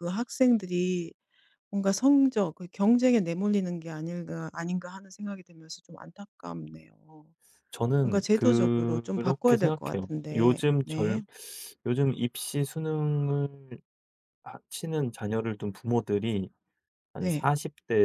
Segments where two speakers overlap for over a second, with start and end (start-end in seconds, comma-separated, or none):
8.0-11.2